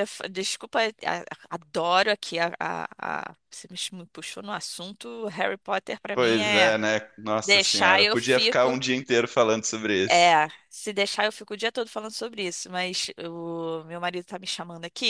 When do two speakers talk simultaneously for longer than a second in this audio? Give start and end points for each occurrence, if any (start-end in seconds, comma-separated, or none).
7.4-8.8